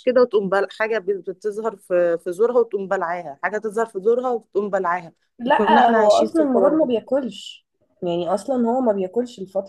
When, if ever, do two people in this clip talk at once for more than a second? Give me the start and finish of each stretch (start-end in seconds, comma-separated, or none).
5.6-6.9